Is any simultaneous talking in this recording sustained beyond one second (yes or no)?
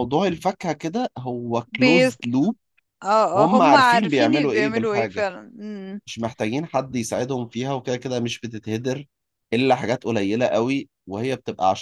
yes